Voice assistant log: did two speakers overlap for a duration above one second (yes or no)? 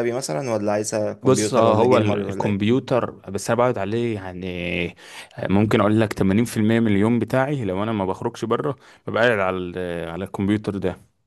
yes